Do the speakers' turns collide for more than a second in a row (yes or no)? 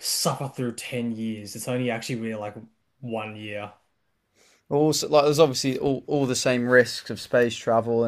no